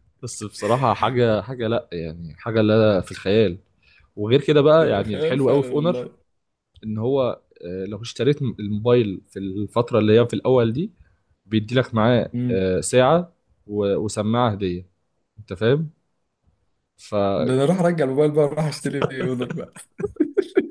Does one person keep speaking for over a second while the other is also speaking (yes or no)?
yes